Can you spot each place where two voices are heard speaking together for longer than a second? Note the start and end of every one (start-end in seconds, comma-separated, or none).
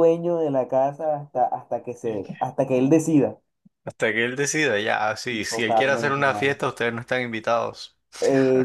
5.3-6.6